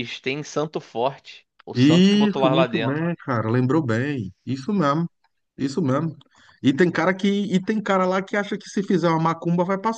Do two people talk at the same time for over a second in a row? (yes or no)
yes